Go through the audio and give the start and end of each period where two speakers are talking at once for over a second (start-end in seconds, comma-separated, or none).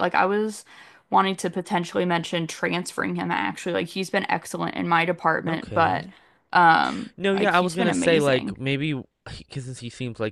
7.2-8.6